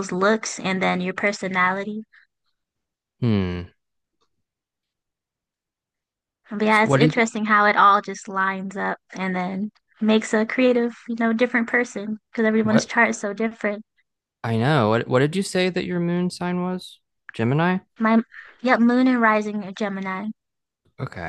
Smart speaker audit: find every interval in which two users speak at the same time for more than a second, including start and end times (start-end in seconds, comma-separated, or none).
none